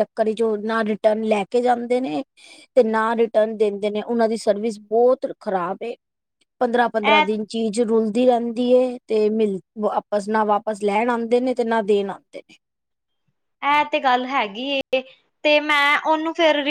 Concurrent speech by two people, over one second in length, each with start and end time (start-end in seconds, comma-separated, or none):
none